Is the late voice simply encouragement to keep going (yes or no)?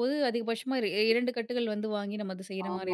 no